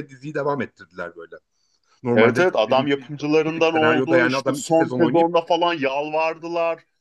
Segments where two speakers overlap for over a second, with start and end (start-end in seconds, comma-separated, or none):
2.1-5.3